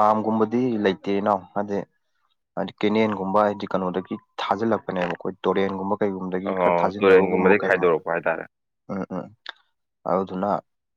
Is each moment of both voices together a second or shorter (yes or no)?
no